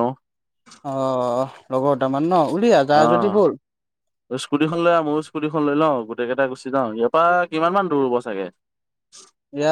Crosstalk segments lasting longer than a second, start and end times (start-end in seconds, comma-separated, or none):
none